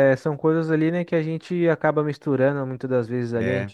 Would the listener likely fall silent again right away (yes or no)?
yes